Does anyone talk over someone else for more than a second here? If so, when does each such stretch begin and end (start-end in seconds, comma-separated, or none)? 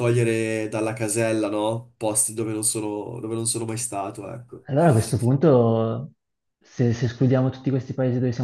none